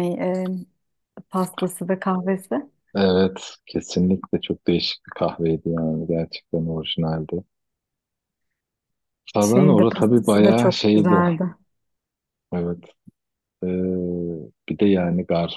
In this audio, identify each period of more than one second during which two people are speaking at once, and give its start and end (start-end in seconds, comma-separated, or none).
9.4-11.2